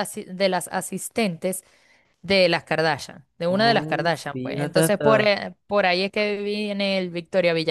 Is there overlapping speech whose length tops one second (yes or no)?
yes